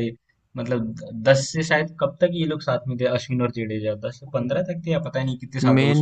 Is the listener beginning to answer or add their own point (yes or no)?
yes